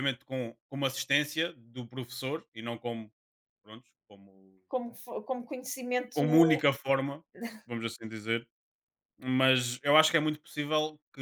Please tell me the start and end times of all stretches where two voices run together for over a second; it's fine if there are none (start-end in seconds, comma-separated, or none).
none